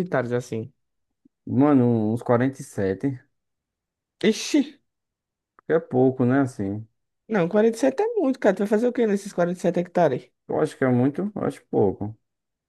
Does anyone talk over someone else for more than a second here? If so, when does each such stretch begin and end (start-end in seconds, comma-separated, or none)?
none